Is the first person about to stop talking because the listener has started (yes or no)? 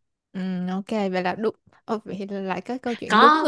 yes